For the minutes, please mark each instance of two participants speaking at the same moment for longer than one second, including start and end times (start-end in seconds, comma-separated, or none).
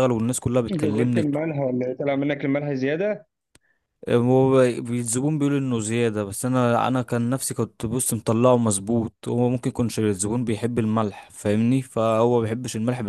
none